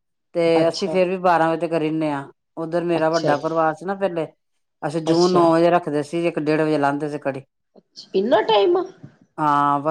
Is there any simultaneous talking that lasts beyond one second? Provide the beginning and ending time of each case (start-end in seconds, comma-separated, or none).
none